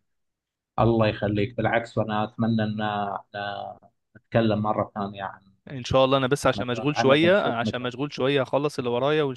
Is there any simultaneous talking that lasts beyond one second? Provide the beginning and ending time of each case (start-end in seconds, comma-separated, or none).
6.5-8.0